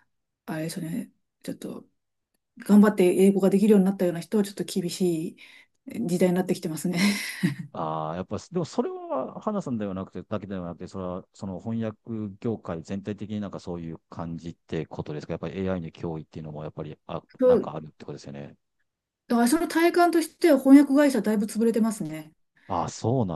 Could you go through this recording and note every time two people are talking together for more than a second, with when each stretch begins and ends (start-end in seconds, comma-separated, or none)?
none